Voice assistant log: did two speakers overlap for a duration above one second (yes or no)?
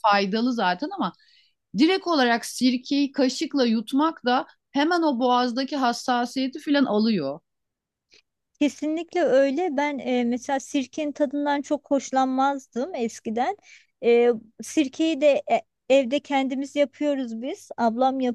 no